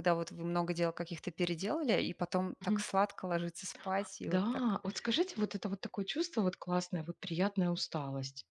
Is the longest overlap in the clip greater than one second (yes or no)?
no